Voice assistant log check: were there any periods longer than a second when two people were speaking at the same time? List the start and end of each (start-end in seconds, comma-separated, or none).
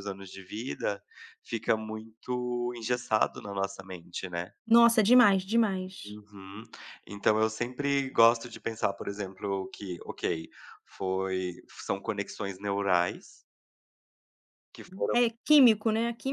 none